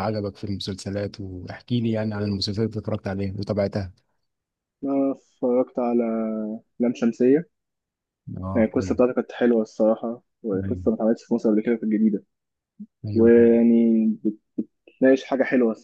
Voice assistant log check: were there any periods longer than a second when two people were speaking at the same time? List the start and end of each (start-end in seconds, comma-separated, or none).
none